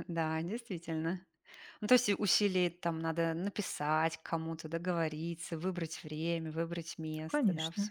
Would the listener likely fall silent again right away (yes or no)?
no